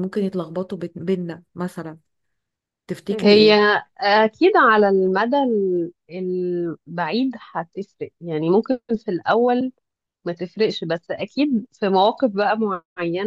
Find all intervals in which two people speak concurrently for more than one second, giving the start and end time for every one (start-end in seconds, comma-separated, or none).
none